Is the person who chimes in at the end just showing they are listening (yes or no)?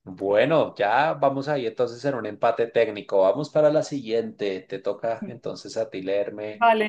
no